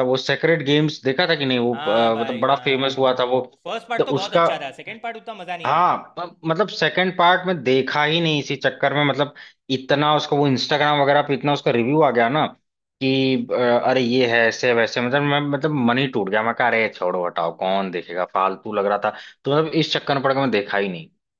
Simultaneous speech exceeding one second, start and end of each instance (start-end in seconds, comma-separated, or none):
1.7-3.1